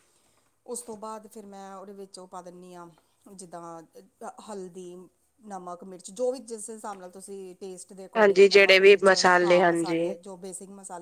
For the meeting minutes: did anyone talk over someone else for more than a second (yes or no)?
yes